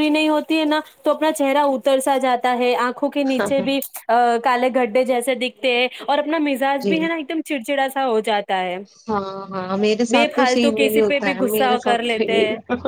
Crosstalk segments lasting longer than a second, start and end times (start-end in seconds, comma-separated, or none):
10.1-12.2